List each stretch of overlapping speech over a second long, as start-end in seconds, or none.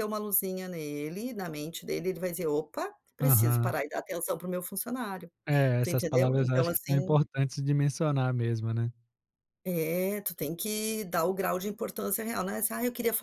5.8-7.2